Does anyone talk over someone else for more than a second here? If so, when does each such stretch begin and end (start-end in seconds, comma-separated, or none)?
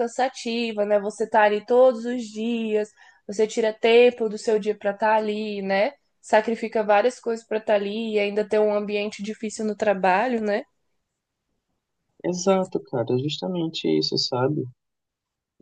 none